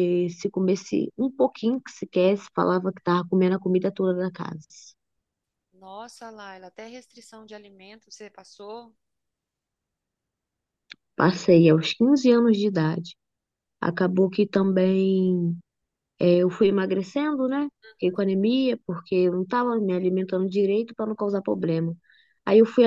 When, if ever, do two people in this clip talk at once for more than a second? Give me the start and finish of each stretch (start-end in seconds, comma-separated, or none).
none